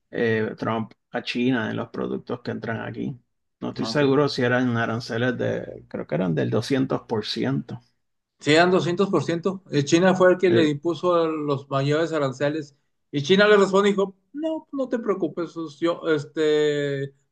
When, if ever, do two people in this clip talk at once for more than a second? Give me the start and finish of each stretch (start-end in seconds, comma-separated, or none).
none